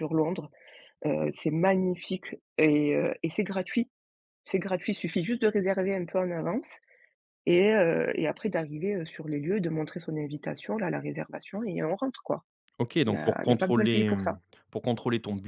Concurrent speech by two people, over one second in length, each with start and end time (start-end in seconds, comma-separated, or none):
13.1-14.4